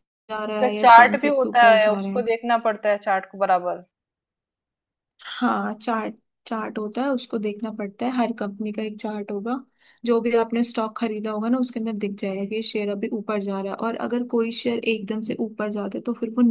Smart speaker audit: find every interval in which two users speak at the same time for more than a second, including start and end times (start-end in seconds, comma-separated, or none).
0.6-2.2